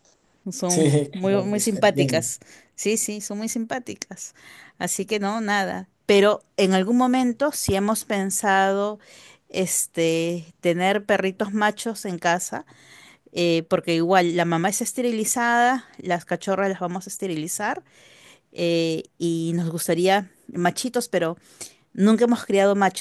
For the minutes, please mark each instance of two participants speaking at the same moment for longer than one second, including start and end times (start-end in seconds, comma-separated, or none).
0.7-2.2